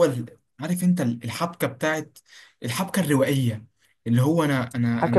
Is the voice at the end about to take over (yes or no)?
yes